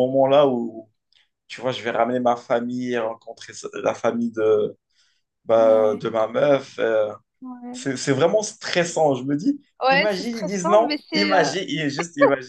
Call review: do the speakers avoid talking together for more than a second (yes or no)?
no